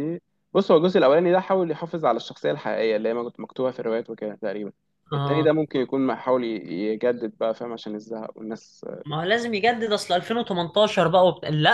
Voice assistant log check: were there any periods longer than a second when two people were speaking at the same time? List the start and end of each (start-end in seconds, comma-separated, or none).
none